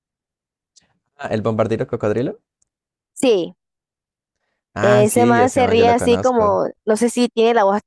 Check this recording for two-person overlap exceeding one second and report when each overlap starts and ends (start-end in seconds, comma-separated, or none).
4.8-6.6